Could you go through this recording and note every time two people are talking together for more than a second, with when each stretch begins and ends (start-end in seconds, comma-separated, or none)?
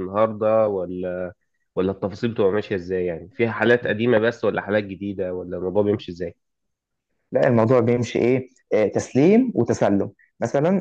none